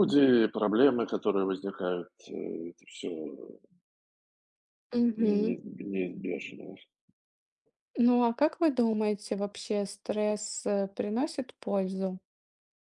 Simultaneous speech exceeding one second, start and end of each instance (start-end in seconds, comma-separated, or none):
none